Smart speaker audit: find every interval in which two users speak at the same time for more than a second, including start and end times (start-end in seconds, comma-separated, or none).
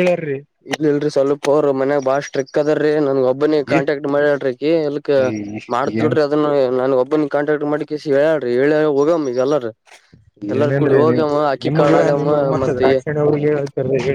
none